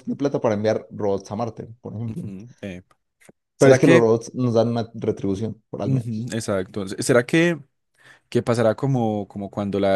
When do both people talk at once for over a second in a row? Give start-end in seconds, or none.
none